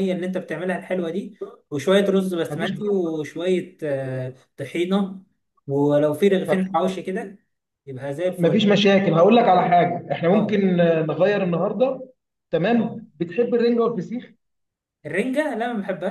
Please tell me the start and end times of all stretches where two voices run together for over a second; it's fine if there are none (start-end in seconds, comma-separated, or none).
none